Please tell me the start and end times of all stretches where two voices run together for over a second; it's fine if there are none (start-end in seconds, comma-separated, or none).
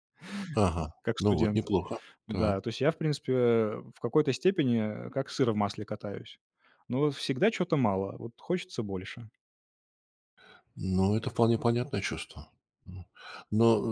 none